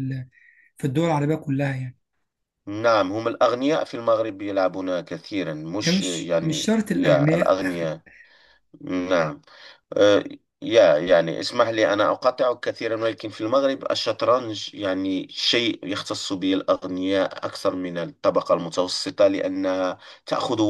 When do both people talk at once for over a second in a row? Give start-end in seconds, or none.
5.8-7.6